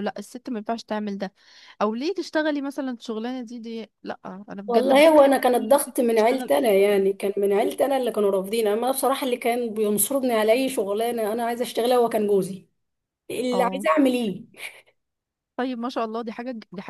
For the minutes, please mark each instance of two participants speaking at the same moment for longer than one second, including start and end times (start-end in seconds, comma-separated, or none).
4.7-7.0